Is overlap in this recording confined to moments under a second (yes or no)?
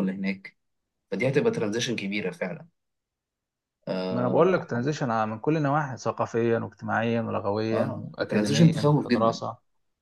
no